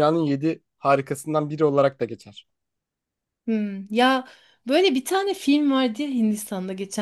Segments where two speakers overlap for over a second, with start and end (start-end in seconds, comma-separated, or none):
none